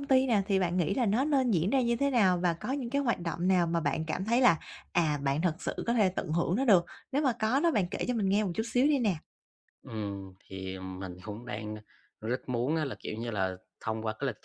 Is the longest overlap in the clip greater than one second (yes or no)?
no